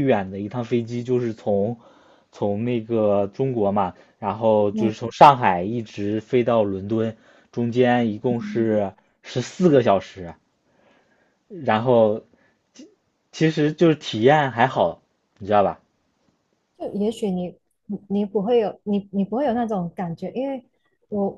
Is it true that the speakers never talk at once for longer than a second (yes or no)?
yes